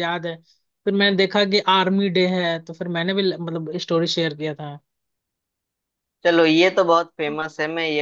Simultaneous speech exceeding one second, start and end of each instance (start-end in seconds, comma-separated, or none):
none